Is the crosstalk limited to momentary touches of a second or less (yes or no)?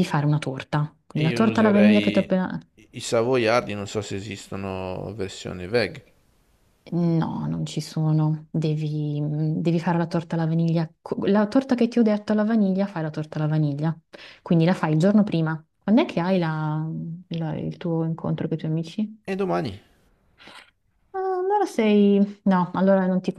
no